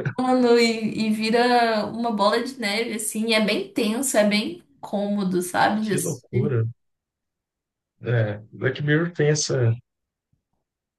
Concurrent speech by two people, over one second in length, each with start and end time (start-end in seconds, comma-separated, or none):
none